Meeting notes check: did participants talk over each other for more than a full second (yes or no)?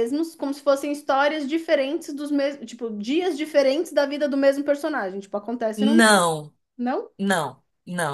no